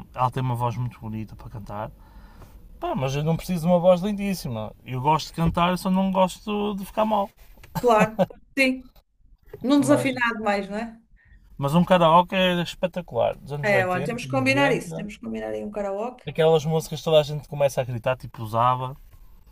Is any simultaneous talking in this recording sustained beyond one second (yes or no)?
yes